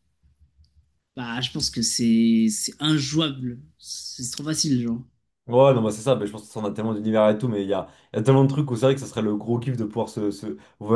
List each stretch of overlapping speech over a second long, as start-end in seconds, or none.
none